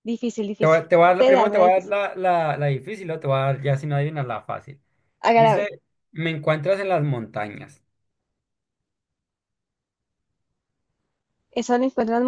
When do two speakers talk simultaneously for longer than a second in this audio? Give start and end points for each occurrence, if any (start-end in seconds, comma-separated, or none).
0.6-1.9